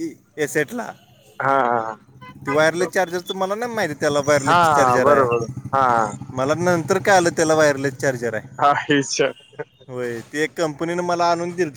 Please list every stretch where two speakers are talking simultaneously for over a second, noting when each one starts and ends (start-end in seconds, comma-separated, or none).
none